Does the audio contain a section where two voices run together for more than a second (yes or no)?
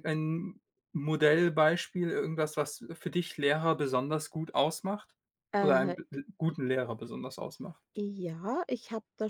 no